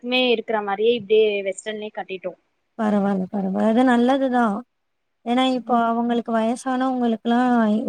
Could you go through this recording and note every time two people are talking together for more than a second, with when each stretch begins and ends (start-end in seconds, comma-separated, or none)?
none